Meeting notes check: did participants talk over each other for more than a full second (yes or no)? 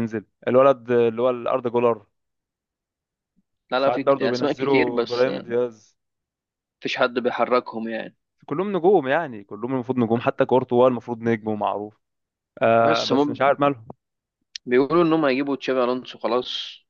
yes